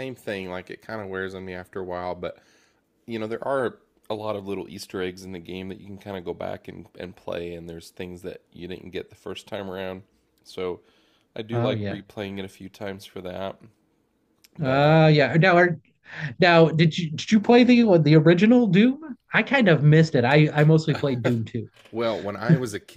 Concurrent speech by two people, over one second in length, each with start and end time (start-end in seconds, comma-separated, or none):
none